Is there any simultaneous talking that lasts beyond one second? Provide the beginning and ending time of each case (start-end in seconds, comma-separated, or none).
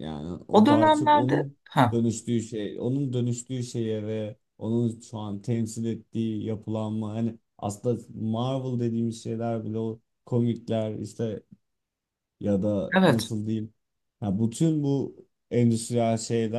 0.5-2.0